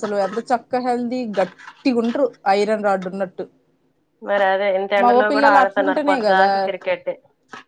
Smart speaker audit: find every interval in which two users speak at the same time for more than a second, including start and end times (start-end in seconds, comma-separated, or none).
5.0-6.5